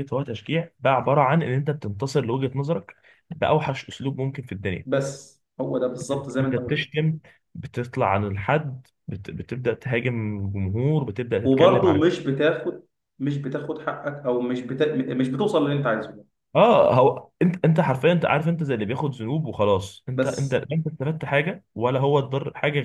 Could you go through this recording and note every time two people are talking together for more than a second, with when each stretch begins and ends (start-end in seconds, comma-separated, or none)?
none